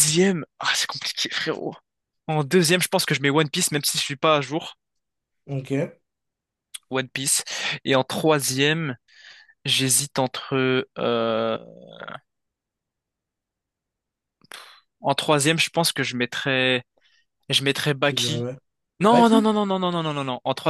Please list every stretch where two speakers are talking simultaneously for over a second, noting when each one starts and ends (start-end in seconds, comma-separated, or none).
none